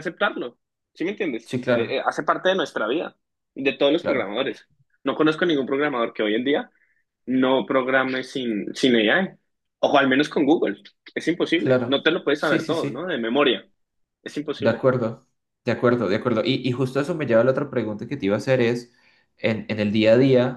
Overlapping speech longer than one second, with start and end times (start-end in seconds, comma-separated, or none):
11.5-13.1